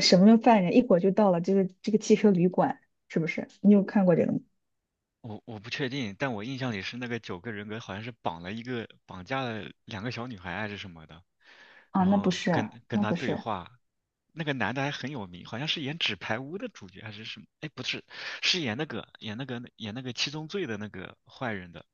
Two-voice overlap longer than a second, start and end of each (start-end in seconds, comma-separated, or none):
11.9-13.4